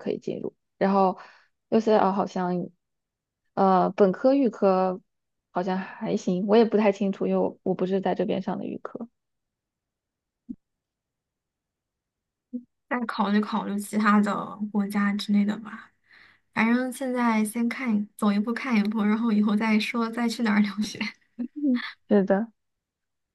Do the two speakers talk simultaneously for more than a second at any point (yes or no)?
no